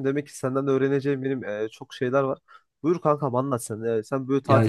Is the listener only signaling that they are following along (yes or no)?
yes